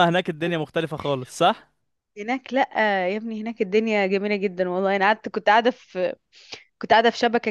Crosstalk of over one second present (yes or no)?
no